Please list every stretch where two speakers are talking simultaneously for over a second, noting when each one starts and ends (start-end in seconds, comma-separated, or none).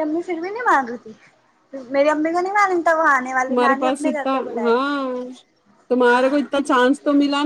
none